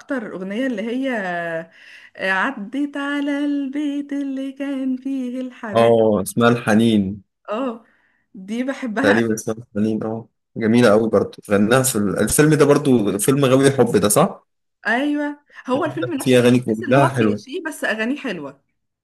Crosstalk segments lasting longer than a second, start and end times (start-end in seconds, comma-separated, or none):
16.2-17.4